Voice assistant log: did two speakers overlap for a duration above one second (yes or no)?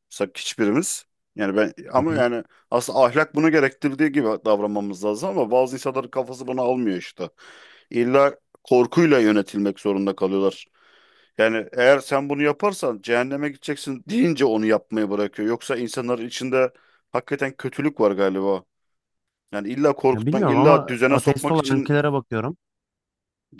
yes